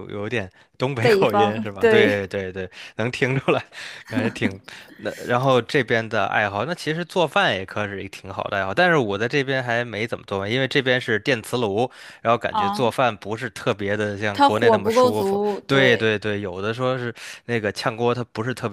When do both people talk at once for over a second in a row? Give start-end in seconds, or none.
1.0-2.3, 14.3-16.1